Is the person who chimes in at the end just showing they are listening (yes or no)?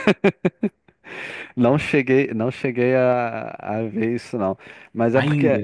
yes